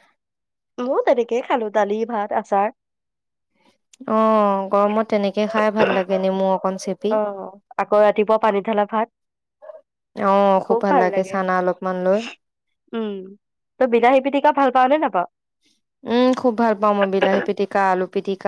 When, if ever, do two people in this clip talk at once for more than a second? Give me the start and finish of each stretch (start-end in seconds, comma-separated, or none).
none